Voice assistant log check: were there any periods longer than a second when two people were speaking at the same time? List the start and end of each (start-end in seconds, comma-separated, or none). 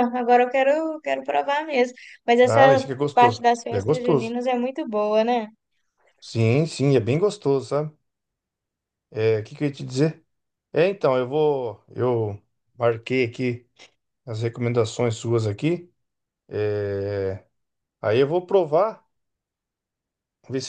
2.5-4.4